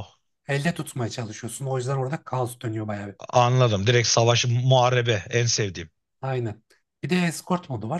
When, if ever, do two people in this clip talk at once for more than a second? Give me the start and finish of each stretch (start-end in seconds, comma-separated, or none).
none